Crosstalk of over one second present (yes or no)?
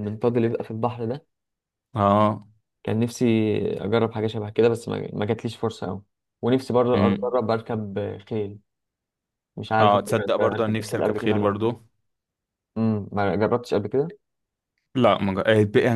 yes